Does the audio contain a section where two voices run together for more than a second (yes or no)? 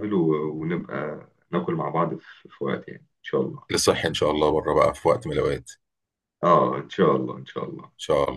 no